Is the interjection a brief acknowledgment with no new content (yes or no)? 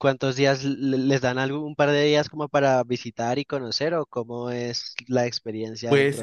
no